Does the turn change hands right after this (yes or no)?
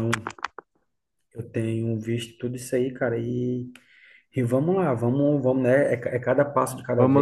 yes